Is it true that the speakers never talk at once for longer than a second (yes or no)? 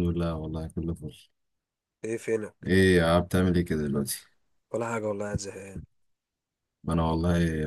yes